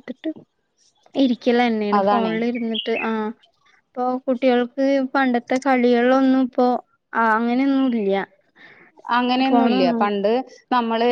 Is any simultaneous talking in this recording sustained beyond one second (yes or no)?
no